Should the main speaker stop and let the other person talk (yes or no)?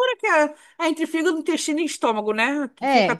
yes